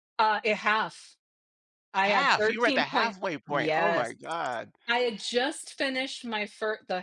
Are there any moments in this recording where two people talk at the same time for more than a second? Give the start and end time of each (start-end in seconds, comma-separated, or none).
2.0-4.1